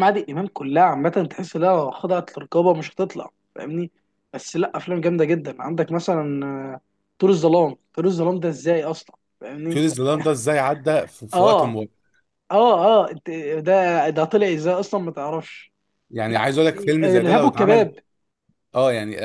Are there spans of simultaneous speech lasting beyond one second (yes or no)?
yes